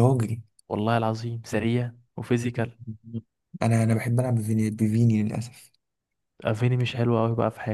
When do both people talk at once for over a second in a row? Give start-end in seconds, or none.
none